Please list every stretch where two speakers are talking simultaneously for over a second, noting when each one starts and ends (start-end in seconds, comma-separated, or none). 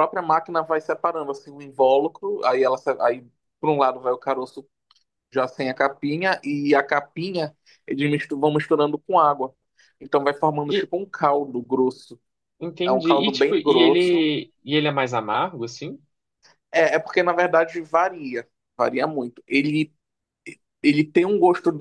12.9-14.2